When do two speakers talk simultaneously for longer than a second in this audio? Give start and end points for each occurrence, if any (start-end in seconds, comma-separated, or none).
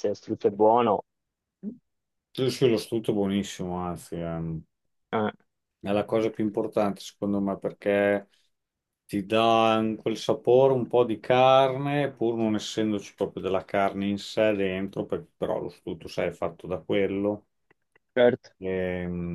none